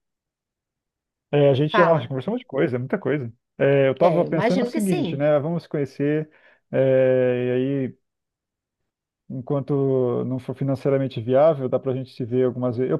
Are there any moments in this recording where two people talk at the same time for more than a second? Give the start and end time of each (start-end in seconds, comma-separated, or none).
4.0-5.2